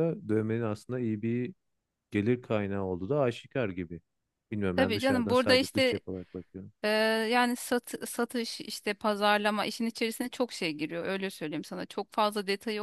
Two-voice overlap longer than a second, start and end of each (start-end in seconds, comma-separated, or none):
4.8-6.0